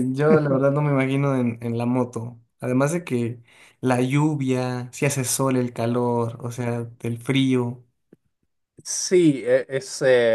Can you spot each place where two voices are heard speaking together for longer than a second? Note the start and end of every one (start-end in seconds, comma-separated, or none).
none